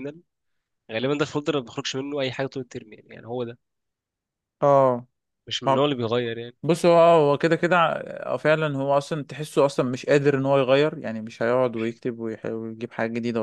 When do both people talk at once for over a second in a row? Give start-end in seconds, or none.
none